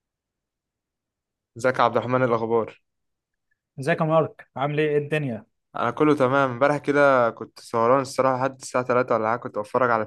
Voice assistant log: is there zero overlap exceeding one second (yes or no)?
yes